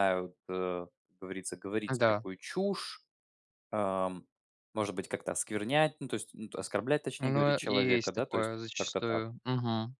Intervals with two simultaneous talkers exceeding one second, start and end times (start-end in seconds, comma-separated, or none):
7.2-9.2